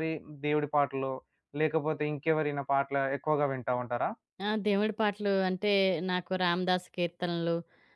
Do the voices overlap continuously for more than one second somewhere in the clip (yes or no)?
no